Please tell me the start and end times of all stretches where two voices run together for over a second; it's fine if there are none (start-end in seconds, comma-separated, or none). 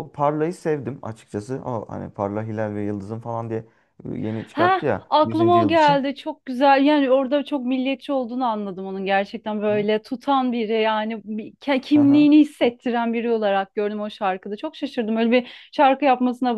4.5-6.0